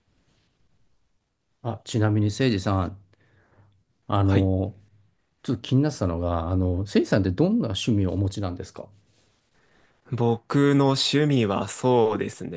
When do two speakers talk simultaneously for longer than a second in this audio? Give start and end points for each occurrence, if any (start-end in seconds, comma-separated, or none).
none